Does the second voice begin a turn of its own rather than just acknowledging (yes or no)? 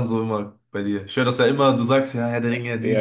yes